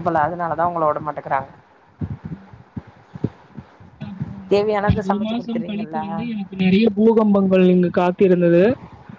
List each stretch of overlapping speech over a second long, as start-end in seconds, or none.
4.5-6.0